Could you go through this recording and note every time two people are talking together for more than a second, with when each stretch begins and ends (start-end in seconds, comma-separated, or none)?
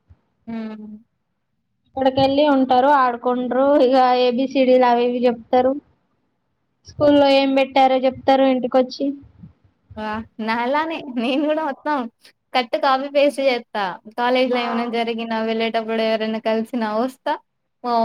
none